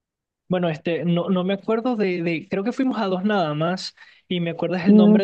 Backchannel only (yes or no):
yes